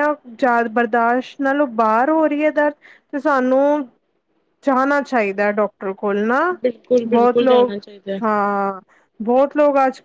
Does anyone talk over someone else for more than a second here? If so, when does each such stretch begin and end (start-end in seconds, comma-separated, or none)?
none